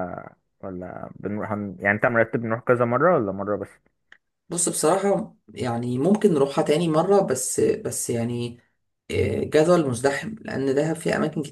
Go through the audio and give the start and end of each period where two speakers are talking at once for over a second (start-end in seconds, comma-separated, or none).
none